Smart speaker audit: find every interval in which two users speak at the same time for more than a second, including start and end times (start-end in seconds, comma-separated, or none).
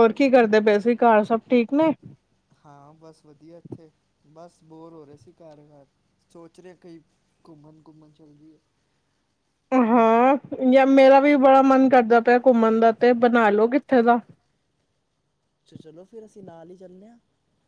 none